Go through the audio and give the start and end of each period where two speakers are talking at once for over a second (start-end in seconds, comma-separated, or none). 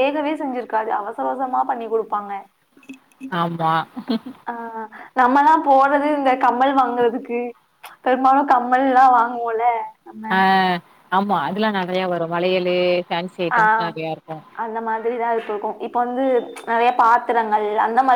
none